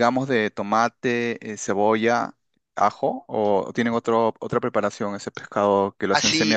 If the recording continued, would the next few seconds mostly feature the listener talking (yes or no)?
yes